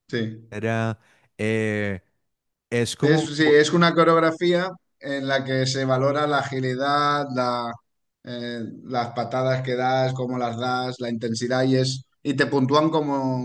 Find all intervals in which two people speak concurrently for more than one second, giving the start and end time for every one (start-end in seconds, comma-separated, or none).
none